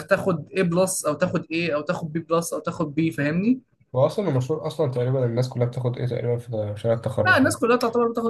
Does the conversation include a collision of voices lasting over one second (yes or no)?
no